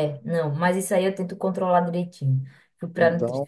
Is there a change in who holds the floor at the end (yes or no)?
yes